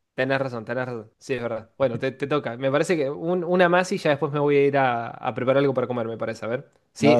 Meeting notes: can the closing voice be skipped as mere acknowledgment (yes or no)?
yes